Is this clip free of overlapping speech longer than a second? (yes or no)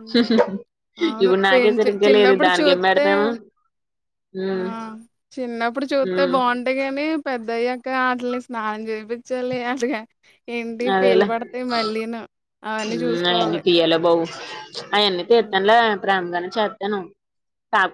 no